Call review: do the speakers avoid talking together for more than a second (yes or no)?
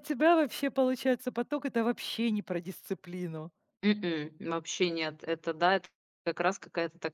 yes